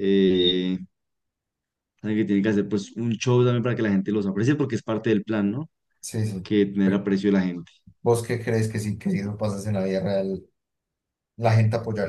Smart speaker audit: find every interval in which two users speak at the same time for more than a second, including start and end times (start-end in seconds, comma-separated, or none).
none